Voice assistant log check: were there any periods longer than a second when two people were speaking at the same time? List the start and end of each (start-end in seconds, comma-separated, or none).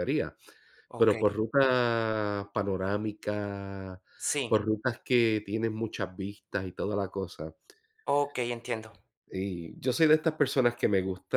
none